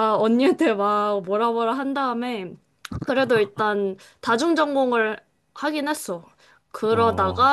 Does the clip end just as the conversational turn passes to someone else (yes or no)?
no